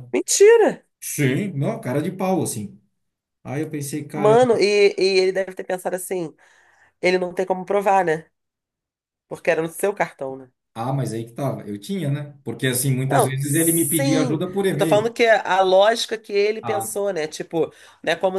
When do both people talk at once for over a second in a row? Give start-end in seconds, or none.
13.1-15.1